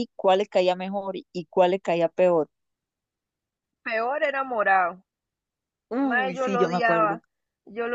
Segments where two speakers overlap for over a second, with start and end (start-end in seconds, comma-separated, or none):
6.0-7.2